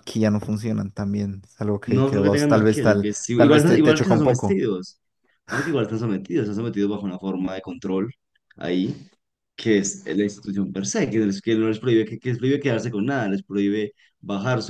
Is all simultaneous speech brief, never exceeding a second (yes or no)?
no